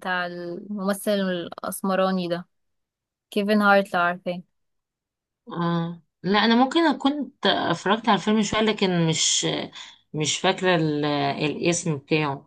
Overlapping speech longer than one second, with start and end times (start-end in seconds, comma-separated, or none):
none